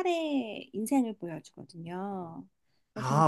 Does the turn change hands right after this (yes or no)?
yes